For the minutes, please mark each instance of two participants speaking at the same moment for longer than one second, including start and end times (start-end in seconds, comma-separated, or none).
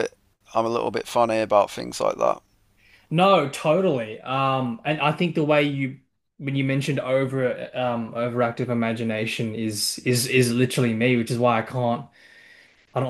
none